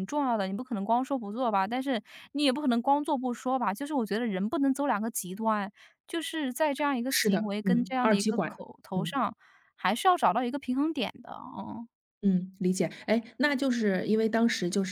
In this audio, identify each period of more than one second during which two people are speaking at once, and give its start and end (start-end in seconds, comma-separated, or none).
7.1-9.2